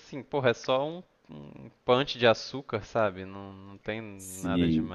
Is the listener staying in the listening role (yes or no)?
no